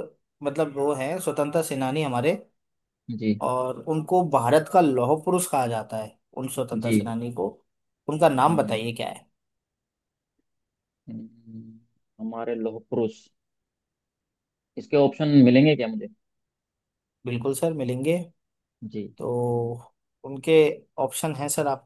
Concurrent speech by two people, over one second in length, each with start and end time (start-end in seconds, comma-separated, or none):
none